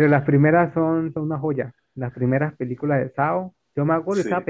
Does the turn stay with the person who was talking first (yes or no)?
yes